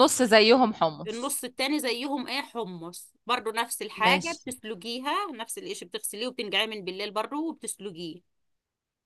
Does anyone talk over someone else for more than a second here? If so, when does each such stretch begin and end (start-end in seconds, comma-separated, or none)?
none